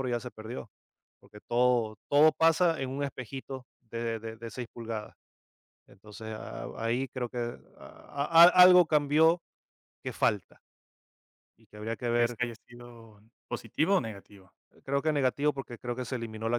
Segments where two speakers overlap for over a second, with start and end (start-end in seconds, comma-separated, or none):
none